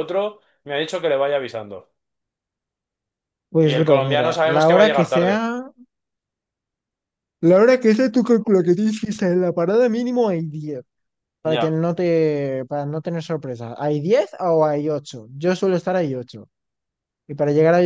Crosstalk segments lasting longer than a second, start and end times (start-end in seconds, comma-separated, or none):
3.6-5.4